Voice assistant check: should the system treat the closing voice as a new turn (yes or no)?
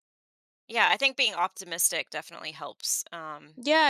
yes